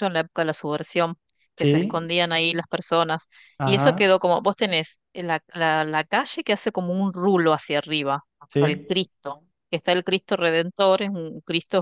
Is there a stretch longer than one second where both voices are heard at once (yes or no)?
no